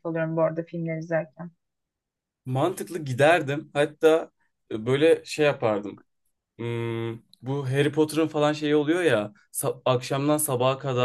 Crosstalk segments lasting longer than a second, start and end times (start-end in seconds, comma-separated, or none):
none